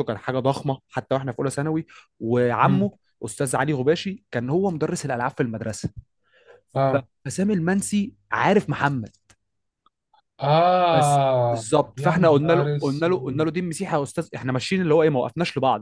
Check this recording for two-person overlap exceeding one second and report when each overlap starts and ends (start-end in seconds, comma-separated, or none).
10.9-13.5